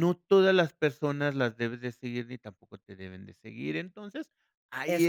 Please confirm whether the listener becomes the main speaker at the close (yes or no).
no